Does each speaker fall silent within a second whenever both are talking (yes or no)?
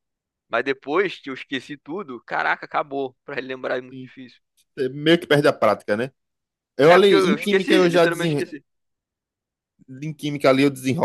no